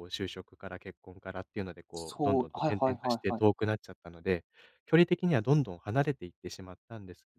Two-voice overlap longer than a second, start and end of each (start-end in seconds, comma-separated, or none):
1.9-3.4